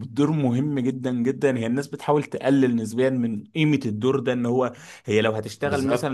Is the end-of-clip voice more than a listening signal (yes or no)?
no